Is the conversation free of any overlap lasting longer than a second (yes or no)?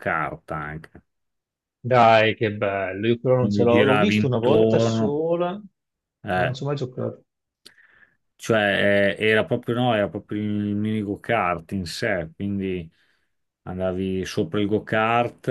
no